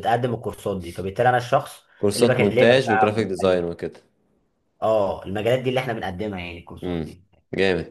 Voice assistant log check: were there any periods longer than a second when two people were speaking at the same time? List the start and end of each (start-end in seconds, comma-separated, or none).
2.0-3.6